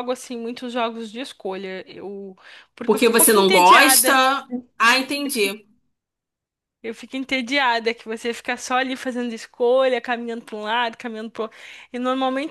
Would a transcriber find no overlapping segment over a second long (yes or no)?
no